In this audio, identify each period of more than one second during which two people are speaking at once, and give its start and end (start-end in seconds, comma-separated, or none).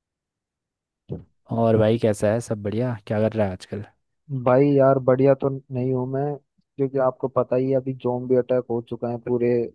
none